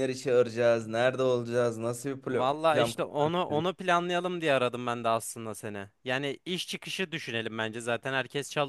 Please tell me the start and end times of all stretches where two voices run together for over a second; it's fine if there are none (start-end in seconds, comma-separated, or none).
2.3-3.7